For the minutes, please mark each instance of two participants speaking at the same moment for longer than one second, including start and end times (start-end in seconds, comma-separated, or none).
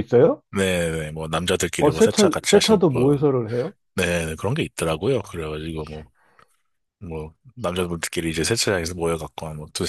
1.8-3.2